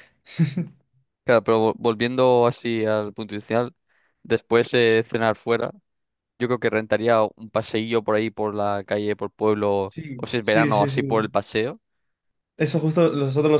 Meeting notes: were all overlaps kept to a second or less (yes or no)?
no